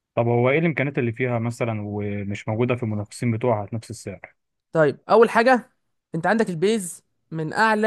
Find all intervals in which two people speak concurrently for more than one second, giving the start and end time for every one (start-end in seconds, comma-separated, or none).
none